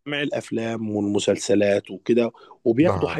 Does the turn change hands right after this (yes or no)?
no